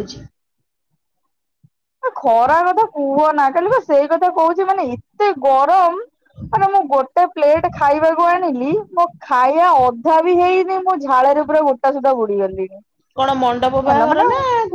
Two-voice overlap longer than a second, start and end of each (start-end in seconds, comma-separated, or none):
none